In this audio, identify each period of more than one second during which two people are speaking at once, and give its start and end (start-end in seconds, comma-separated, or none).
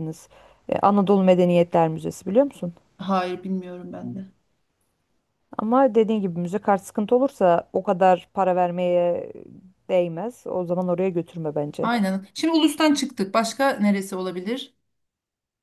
none